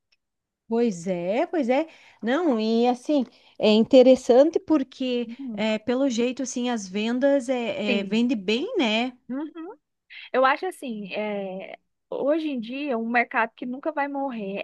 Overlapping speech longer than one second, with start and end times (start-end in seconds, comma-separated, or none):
none